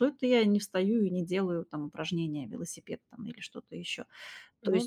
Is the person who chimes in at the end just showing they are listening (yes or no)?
yes